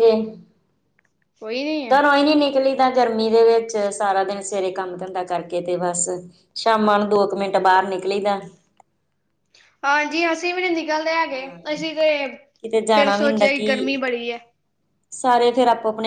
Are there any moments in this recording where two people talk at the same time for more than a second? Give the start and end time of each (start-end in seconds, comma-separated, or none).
none